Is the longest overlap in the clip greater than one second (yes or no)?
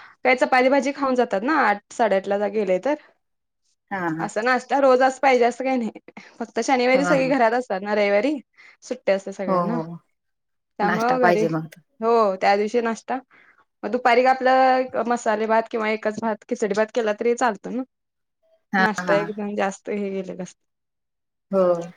no